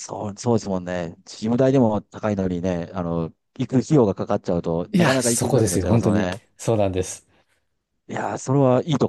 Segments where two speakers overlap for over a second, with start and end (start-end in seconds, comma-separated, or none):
4.9-6.4